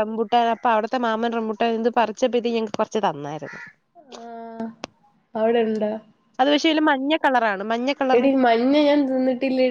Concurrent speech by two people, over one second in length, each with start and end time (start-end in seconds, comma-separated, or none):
none